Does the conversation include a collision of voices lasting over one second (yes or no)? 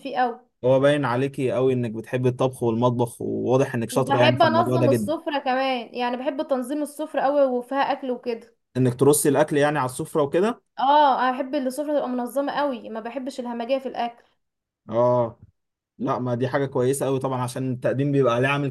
yes